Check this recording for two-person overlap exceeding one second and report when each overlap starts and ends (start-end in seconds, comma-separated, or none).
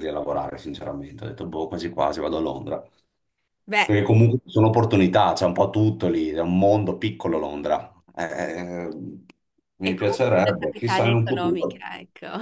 9.8-11.8